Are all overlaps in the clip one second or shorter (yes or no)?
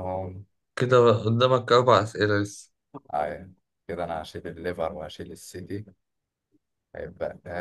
yes